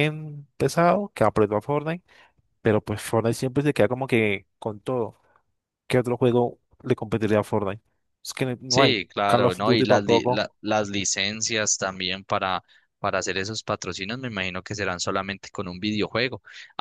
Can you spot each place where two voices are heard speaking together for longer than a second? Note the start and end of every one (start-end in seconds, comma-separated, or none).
8.7-10.4